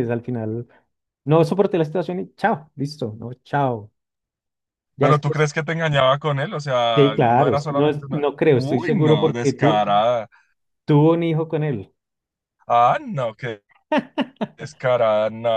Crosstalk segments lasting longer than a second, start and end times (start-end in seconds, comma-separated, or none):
6.9-9.8